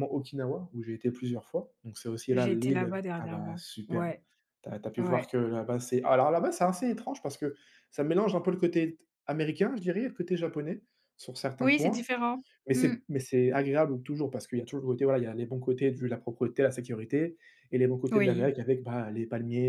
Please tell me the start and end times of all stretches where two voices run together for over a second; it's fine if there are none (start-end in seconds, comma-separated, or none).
2.3-4.1